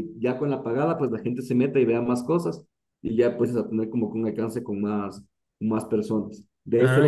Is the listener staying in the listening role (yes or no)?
yes